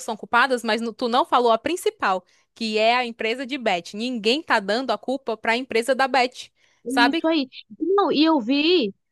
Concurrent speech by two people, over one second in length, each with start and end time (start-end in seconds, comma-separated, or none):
none